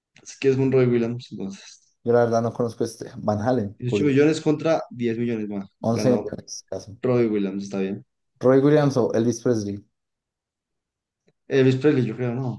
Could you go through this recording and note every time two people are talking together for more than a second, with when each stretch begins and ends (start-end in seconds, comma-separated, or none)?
none